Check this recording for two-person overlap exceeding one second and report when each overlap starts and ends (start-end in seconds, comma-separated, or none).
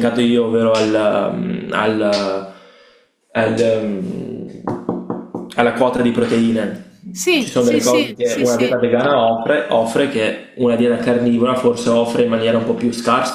7.4-8.8